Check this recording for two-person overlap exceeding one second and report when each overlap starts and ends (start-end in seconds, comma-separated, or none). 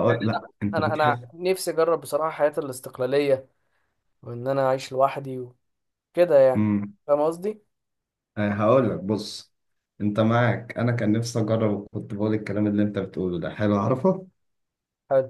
none